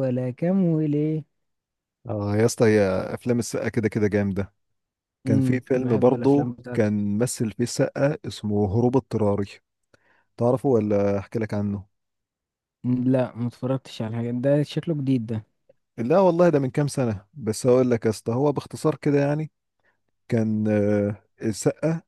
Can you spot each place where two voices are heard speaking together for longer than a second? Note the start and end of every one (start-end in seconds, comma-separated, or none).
5.3-6.9